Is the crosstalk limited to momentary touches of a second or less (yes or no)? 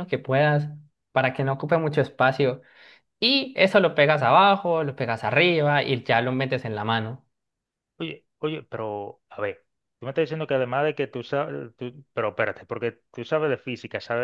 yes